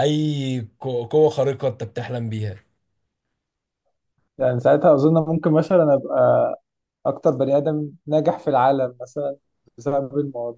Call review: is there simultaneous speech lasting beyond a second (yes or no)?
no